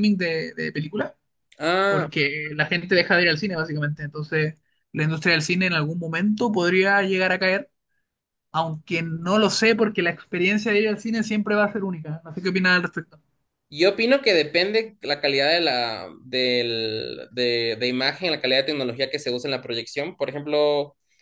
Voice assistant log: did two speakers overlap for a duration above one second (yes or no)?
no